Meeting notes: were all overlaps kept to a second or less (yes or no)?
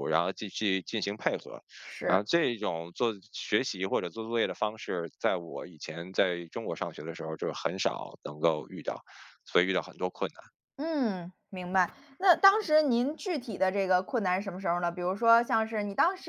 yes